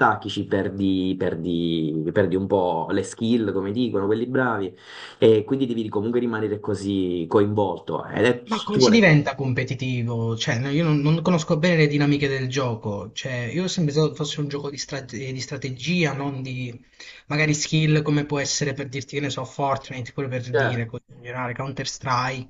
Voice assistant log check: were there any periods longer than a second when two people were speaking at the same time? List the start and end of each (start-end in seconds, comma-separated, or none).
none